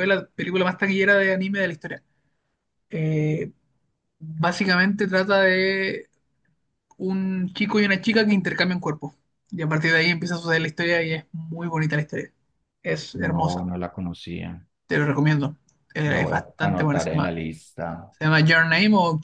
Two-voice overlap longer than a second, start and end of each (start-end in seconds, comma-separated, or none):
16.1-17.3